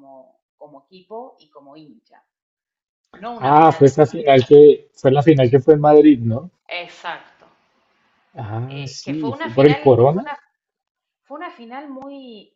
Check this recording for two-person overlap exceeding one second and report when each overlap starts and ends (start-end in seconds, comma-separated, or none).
3.4-4.6, 8.7-10.3